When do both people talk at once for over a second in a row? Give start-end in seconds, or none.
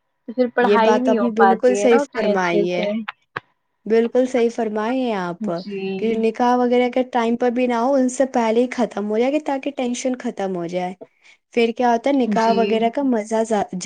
0.7-2.9